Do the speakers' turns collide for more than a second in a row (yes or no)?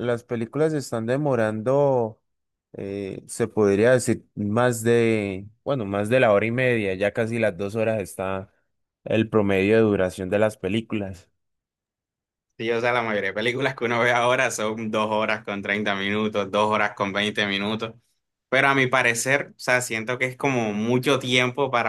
no